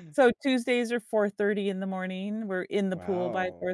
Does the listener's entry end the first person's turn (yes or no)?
no